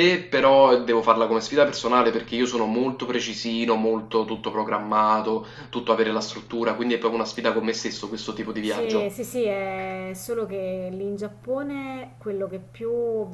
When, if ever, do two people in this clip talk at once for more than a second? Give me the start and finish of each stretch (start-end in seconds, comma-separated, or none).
none